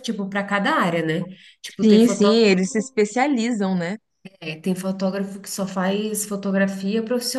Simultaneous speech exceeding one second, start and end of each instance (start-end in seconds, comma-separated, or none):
none